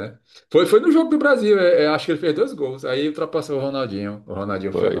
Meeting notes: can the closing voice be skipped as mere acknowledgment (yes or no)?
no